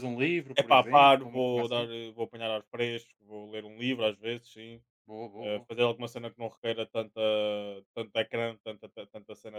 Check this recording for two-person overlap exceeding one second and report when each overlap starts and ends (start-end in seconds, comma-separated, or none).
0.6-1.9